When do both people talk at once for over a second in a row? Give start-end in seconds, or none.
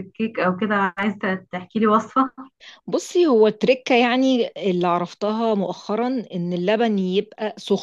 none